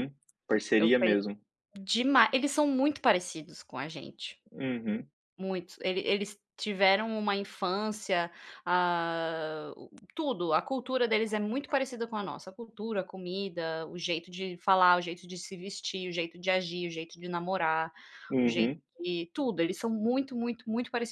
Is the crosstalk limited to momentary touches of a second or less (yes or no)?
yes